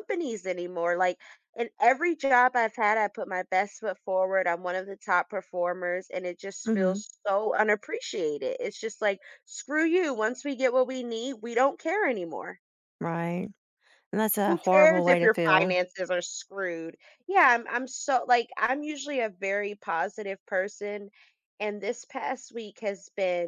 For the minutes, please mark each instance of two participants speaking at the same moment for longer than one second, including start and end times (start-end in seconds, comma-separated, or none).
14.4-15.7